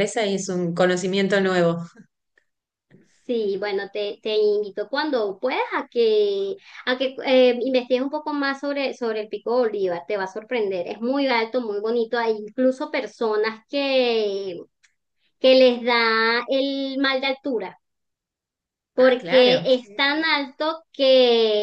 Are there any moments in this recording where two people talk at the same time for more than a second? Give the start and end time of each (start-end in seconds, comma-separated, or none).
19.0-20.3